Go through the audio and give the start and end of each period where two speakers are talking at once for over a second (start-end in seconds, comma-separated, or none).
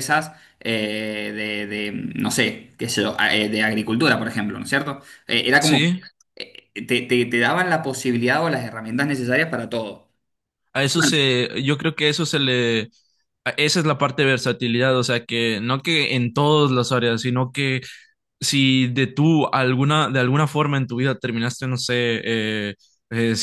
none